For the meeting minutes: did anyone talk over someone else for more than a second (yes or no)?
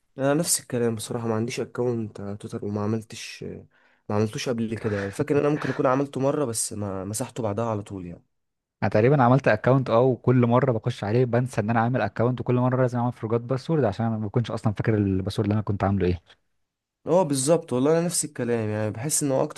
no